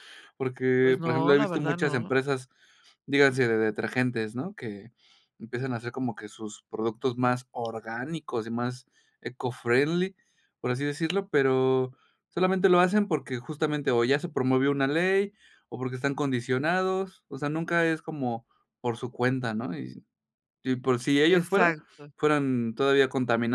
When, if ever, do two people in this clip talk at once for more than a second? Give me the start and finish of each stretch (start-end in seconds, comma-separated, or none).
0.8-2.1